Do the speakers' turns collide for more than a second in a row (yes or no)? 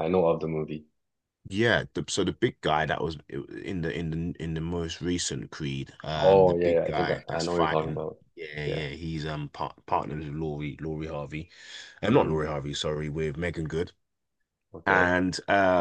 yes